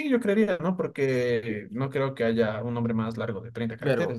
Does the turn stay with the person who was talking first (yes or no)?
no